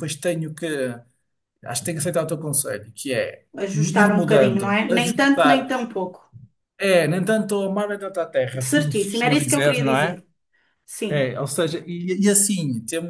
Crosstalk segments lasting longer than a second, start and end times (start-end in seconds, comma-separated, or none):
3.9-5.7, 8.6-10.2